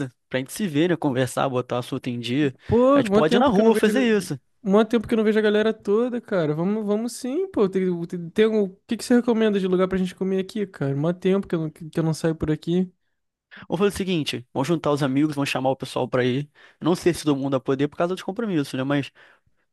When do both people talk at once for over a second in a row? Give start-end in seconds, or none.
2.9-4.4